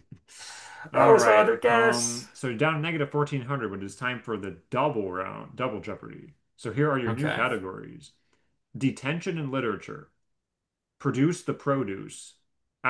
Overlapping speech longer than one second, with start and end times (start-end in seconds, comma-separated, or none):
0.9-2.3